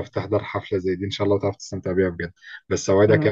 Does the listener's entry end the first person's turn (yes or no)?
no